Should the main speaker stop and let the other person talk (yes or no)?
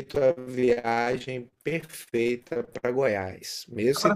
no